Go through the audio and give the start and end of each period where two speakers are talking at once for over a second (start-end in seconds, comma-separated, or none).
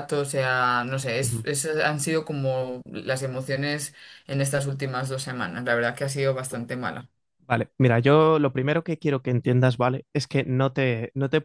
none